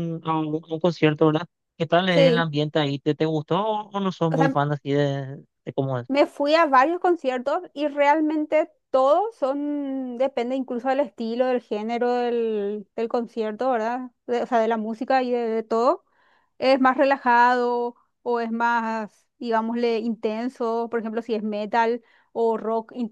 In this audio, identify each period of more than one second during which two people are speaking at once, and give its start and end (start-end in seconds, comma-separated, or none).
none